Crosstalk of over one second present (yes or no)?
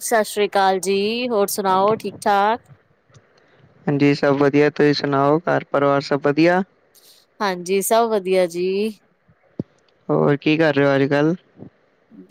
no